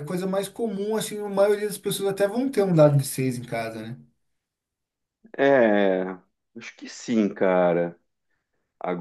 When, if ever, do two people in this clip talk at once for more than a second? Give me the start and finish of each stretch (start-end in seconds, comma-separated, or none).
none